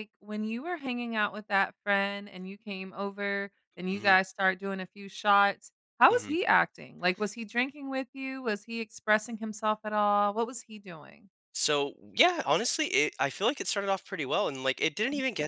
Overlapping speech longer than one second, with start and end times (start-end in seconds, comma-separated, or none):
none